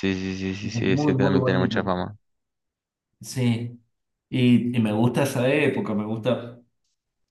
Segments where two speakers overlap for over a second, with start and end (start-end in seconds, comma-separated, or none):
0.6-1.9